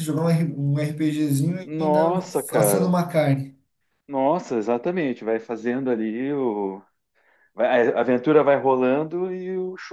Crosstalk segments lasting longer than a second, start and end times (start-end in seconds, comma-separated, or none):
1.6-3.0